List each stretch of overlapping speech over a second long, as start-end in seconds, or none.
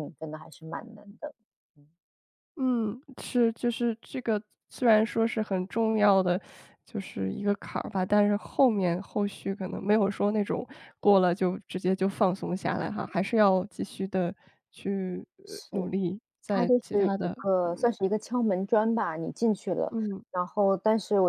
16.5-17.9